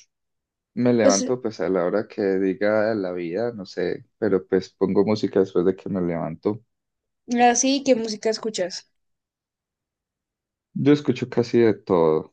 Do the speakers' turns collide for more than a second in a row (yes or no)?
no